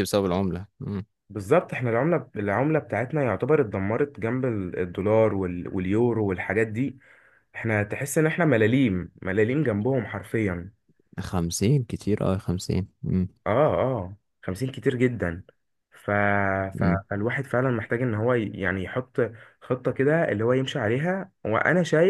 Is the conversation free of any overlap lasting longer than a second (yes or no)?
yes